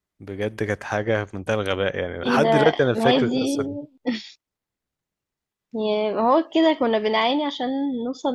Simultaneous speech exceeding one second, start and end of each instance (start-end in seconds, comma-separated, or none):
2.2-3.6